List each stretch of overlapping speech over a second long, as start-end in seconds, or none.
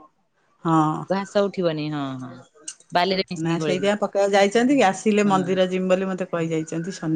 none